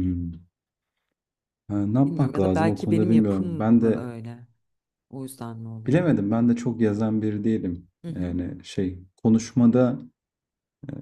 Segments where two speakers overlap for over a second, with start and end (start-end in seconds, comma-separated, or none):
2.1-4.1